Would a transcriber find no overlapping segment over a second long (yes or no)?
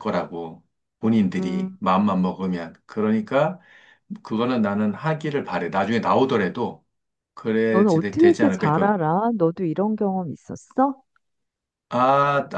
no